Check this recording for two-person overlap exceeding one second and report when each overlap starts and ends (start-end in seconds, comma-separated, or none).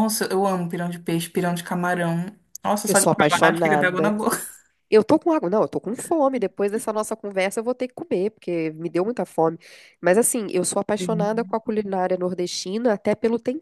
2.9-4.1